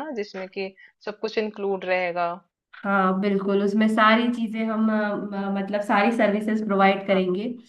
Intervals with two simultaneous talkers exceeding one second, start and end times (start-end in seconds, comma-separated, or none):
none